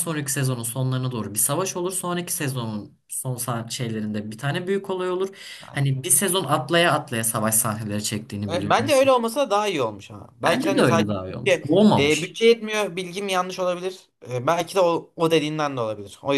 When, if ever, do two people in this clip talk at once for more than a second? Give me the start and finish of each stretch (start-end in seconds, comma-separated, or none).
10.4-12.4